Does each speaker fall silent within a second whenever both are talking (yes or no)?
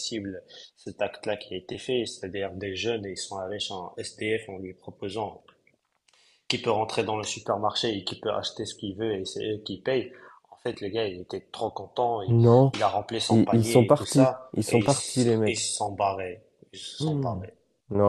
no